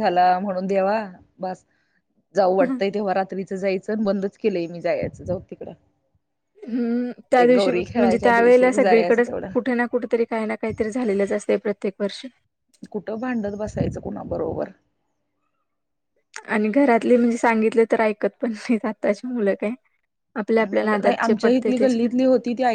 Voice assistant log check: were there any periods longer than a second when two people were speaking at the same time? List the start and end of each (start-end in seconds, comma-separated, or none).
7.4-9.5, 20.6-22.0